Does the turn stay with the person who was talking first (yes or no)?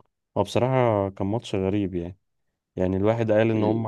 yes